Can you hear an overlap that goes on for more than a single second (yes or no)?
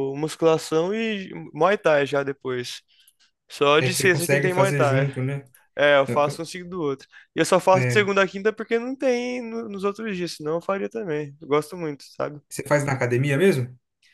yes